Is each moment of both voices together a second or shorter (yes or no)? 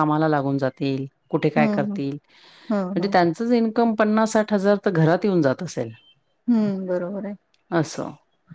yes